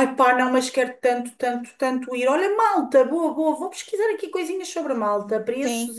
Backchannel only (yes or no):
yes